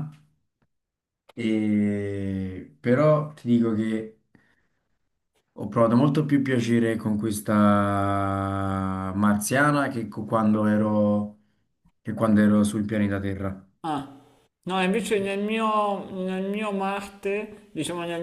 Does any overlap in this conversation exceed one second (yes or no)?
no